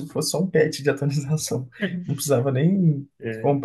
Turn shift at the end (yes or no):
no